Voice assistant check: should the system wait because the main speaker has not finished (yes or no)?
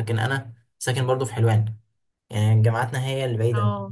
yes